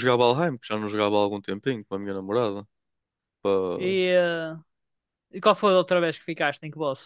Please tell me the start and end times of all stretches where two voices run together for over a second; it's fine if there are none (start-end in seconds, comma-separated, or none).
none